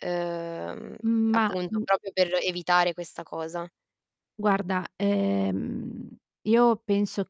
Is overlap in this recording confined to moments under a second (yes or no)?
yes